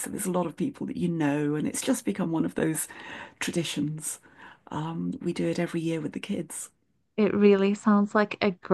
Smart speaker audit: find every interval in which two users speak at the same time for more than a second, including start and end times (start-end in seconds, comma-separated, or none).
none